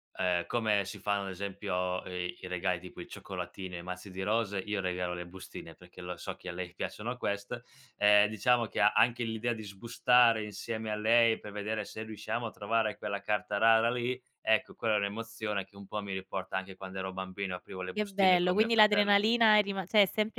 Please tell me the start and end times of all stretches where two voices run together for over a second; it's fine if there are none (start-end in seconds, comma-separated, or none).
17.9-19.1